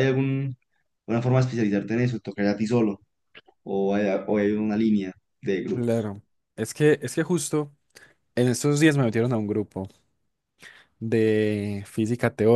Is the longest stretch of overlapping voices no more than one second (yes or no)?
yes